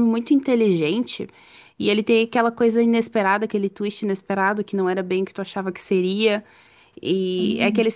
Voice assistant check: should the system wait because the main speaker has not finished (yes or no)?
yes